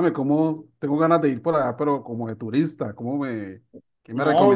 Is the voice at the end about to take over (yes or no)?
yes